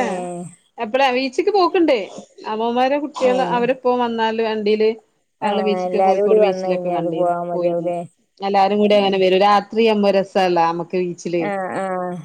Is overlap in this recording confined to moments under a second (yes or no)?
no